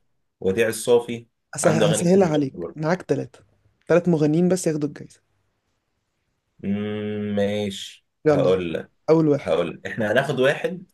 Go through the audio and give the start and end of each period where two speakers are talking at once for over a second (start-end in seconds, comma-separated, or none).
1.6-2.9